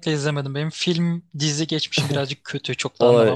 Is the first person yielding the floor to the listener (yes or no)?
yes